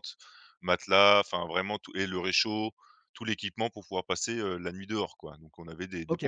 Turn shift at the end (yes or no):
yes